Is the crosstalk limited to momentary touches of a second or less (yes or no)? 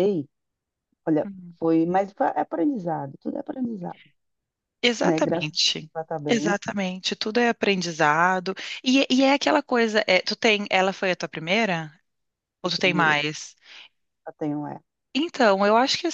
yes